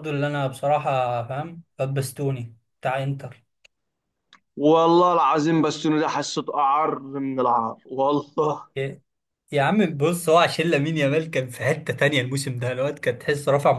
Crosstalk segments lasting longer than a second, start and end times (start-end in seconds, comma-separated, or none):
none